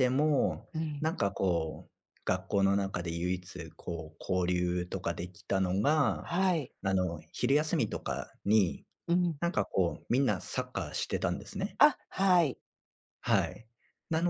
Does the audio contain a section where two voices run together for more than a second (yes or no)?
no